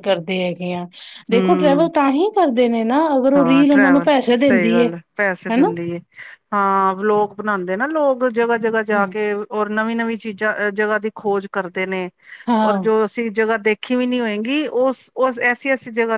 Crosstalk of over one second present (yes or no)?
yes